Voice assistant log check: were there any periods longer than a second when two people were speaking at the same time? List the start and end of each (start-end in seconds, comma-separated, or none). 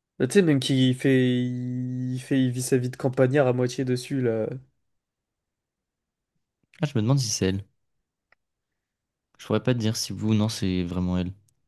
none